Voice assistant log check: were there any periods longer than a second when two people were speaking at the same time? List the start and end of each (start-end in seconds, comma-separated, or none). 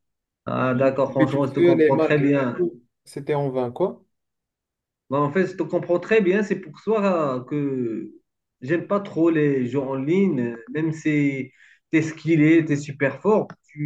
0.6-2.6